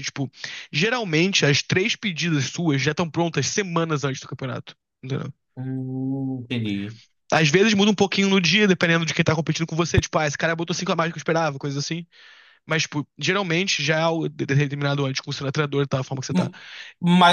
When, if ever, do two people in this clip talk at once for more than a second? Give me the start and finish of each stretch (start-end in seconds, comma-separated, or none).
none